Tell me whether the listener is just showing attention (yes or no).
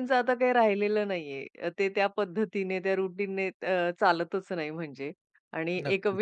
yes